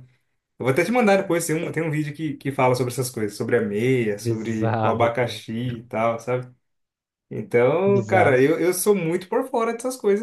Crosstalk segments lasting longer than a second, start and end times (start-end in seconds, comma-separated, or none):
4.2-5.4